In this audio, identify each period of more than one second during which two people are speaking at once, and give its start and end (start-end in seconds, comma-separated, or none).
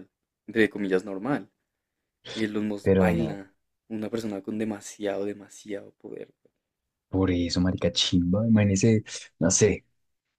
none